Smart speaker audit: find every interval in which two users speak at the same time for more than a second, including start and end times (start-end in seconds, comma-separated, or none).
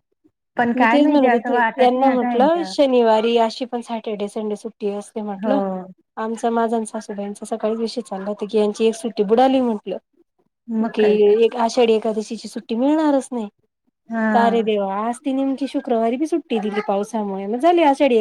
0.8-2.7